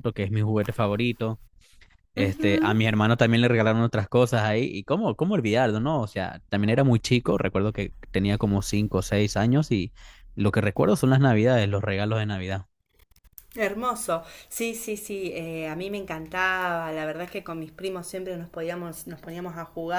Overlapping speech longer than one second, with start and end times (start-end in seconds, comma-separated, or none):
none